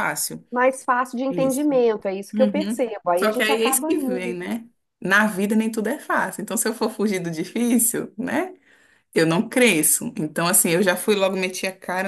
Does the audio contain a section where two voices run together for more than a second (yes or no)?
yes